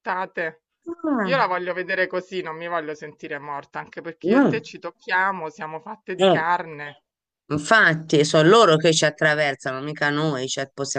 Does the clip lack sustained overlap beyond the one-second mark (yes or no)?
yes